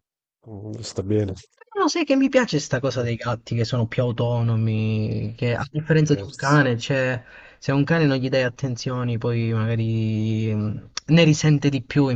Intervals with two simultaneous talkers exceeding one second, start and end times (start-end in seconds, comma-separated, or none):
5.4-6.7